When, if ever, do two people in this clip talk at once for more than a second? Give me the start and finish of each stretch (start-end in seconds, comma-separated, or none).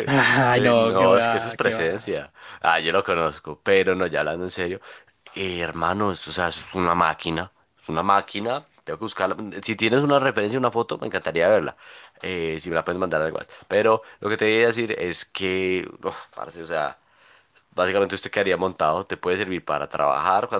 0.5-2.1